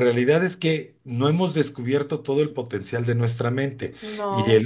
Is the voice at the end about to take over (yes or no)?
no